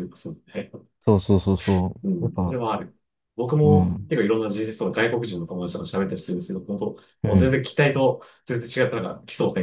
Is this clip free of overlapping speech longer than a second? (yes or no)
yes